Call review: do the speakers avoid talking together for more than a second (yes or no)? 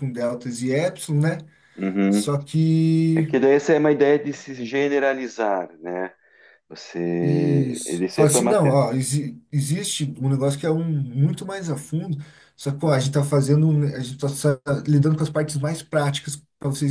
no